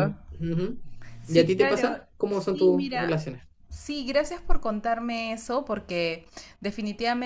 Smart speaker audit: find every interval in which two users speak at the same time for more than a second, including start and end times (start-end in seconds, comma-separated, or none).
1.3-3.2